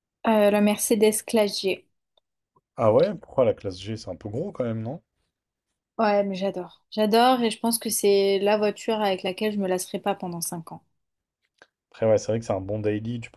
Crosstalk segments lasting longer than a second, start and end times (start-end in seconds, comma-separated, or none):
none